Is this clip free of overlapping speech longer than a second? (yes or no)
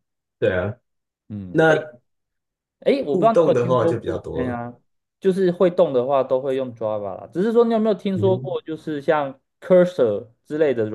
no